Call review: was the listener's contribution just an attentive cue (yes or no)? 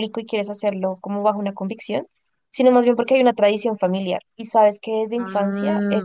yes